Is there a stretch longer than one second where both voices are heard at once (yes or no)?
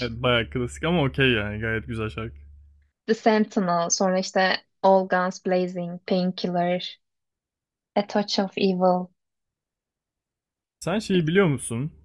no